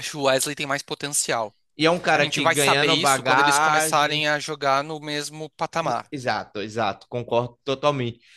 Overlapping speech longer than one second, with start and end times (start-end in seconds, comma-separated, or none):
2.1-4.2